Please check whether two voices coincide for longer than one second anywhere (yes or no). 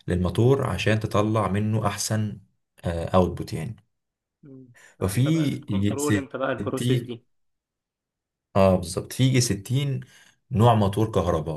yes